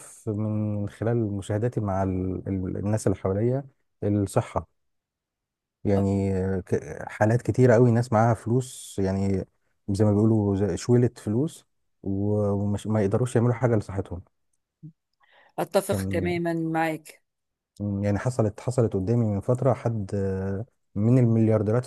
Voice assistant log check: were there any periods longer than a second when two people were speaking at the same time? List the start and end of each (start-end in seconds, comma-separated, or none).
none